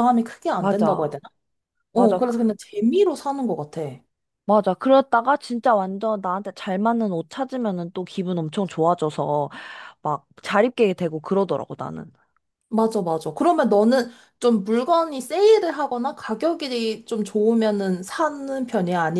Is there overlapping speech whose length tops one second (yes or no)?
no